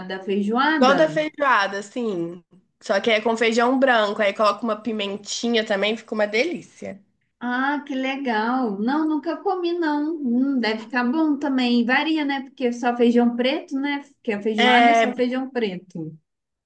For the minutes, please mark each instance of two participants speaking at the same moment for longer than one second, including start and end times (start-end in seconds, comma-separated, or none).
none